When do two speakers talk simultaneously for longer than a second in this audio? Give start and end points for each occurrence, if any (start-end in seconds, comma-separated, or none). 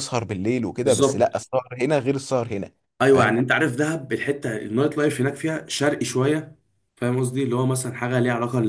none